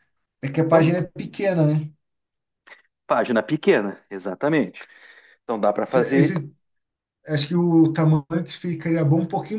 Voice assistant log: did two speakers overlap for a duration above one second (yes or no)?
no